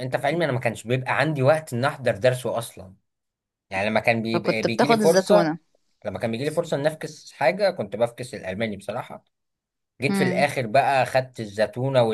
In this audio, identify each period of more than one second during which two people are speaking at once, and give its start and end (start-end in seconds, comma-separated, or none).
4.3-5.5